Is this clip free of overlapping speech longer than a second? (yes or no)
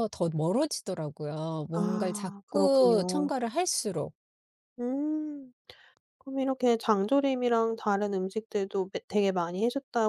no